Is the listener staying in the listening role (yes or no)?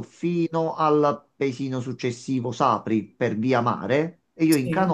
yes